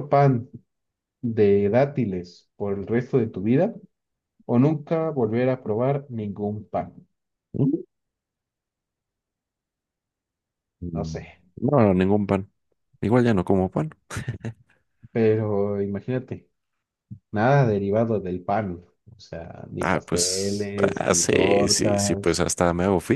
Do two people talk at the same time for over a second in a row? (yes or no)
yes